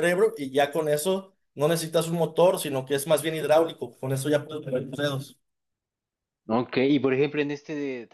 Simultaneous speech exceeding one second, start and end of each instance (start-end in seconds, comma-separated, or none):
none